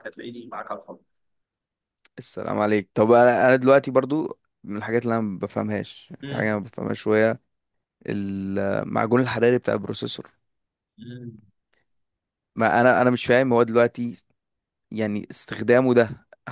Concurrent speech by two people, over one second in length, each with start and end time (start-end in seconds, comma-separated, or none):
none